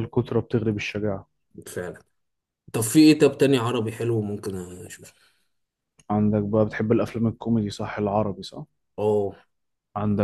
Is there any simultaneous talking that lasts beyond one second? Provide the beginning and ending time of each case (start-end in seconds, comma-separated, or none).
none